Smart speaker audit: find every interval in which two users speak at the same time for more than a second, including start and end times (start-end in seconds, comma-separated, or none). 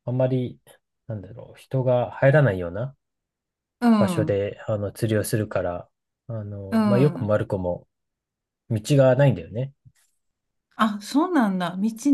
none